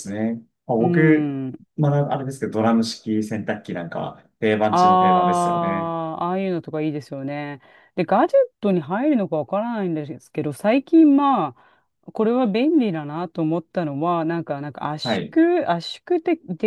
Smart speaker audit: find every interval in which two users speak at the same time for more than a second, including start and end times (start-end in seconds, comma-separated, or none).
4.7-6.0